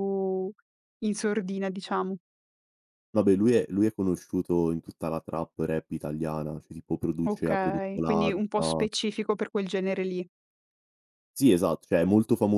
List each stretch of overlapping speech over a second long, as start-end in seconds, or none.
7.3-8.8